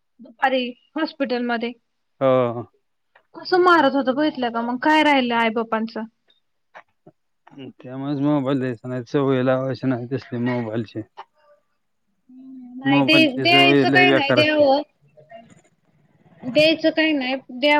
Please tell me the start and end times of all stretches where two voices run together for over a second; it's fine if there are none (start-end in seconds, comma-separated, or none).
12.9-14.6